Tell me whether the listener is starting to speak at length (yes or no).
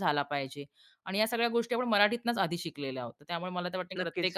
no